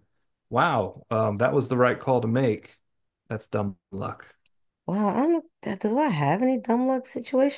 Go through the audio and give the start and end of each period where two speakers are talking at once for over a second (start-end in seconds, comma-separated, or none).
none